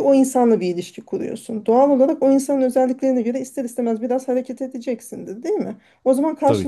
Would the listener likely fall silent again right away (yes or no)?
yes